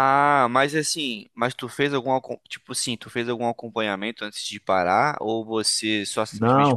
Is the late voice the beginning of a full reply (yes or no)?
yes